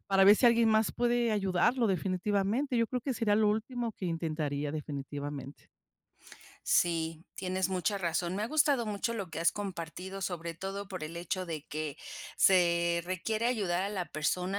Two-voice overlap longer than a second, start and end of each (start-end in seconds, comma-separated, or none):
none